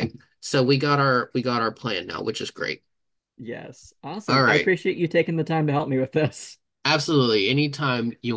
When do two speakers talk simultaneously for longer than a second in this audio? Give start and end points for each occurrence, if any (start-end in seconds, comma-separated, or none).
none